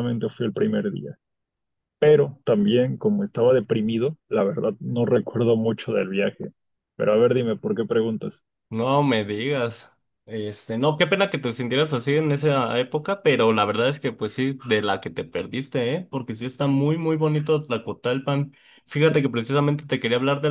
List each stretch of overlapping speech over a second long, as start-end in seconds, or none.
none